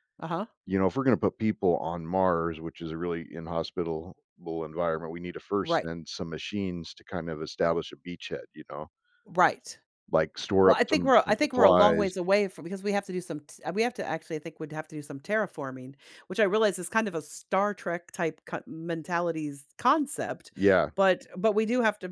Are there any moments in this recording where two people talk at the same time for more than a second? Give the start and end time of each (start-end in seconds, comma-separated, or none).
10.6-12.1